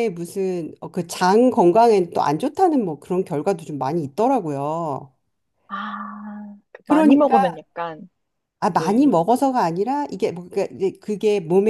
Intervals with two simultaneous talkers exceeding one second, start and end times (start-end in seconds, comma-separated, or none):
none